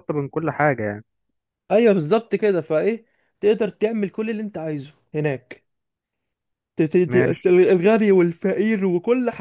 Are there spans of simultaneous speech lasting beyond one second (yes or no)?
no